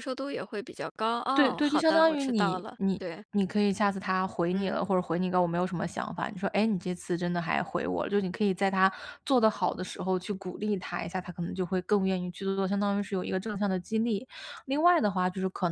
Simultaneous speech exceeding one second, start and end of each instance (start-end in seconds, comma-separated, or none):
1.4-3.2